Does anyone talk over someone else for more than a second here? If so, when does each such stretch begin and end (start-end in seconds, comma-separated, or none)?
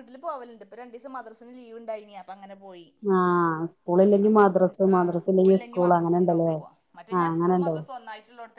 4.3-6.5